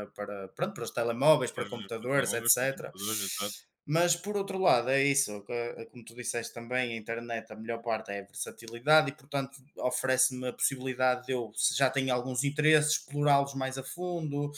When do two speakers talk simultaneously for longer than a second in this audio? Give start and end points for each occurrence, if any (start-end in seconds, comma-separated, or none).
1.5-2.9